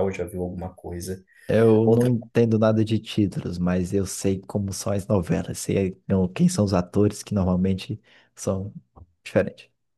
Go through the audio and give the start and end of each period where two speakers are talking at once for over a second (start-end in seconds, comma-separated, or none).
none